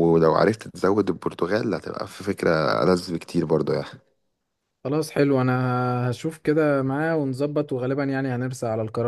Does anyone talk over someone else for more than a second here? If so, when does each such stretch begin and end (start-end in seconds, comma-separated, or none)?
none